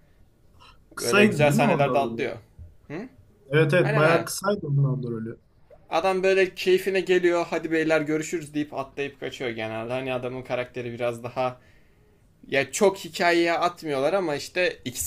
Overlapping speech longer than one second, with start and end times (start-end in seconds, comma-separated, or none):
1.0-2.3